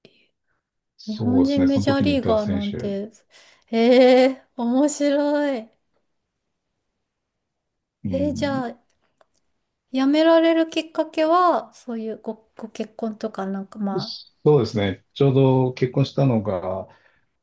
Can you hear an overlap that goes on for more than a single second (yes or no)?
yes